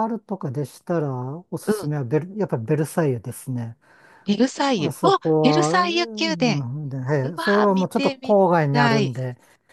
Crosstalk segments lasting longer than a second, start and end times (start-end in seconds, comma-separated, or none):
4.8-6.6, 7.2-9.2